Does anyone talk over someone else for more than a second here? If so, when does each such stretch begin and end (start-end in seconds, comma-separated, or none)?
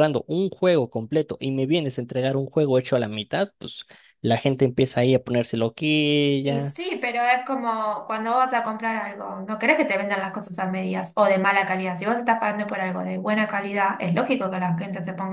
none